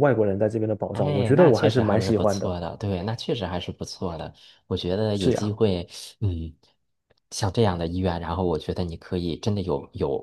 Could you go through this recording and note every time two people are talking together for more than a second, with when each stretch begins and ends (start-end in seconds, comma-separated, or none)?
0.9-2.6